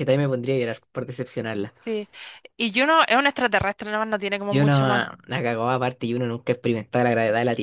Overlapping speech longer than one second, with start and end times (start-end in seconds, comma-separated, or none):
none